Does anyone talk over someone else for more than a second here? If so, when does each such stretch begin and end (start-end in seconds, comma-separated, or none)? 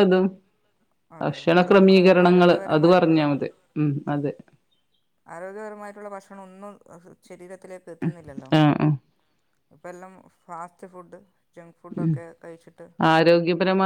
1.2-3.2